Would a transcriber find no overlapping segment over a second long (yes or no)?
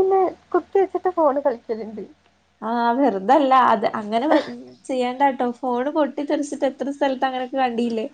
yes